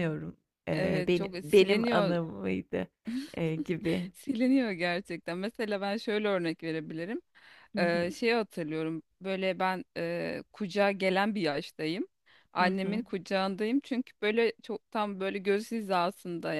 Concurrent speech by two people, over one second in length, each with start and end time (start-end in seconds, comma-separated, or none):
0.7-2.2